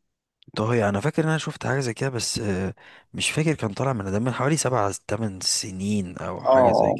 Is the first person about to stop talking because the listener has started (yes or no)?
yes